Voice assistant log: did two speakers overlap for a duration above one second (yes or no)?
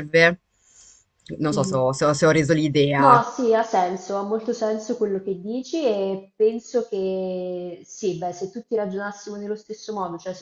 no